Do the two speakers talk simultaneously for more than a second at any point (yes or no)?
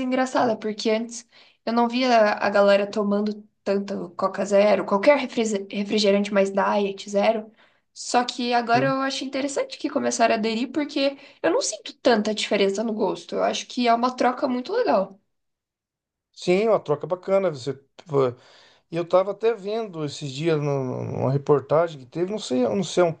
no